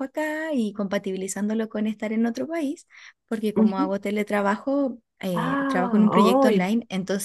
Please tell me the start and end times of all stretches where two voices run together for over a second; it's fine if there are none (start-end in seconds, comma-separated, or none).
5.3-6.7